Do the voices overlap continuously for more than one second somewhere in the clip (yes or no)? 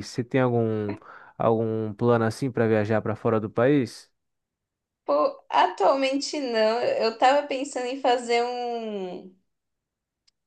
no